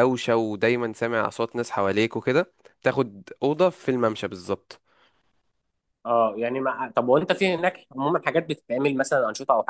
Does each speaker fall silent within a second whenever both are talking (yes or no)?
yes